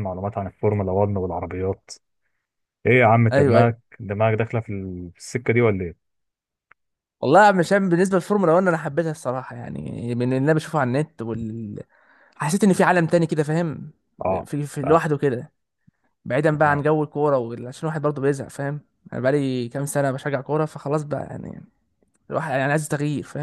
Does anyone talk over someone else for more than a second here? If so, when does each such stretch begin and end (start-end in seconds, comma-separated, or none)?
none